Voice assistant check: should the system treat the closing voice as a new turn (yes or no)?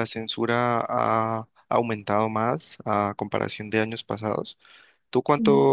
no